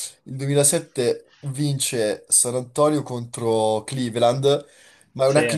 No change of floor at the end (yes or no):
yes